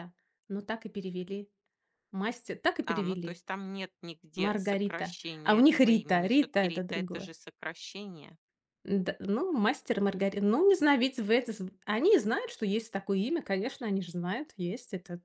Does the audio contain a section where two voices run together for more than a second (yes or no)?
yes